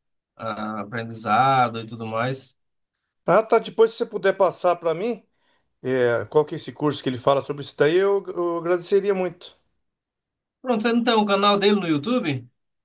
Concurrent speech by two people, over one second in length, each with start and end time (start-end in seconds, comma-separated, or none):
none